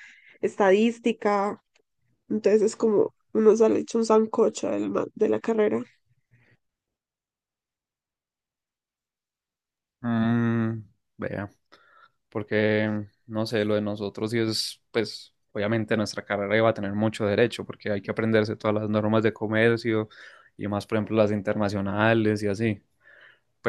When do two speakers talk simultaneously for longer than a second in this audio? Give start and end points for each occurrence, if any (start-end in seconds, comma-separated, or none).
none